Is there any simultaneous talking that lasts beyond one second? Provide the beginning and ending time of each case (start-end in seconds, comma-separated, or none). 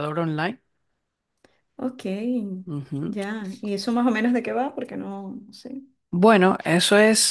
none